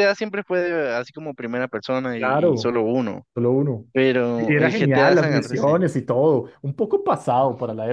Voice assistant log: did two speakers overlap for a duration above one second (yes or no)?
yes